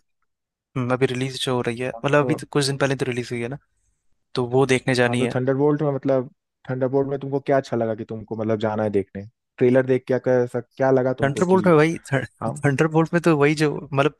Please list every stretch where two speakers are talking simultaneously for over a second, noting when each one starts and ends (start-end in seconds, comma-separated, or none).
none